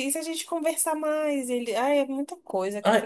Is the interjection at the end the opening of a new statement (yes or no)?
yes